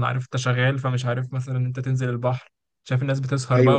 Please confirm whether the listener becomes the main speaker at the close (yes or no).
no